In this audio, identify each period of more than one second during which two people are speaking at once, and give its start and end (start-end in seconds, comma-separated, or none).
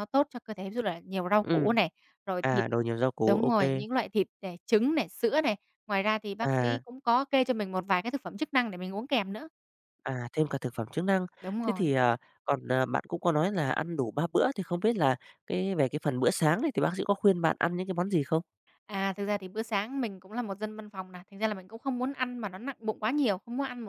none